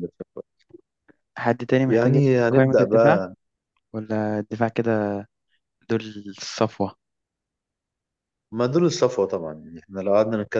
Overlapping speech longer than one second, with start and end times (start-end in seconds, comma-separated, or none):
1.9-3.2